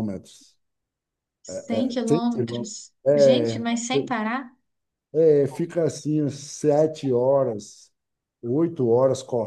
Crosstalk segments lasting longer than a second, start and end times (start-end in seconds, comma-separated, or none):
2.0-3.7